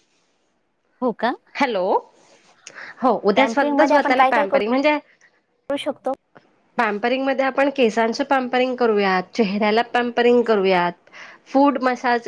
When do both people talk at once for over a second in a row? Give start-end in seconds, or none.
3.4-4.7